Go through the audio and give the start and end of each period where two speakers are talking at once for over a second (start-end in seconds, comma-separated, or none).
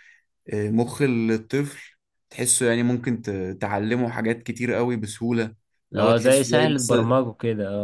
6.0-7.2